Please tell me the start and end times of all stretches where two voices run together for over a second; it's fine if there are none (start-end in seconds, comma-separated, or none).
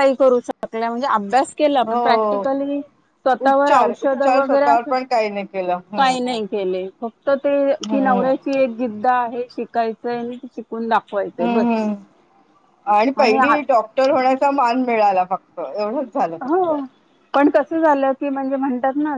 3.5-4.9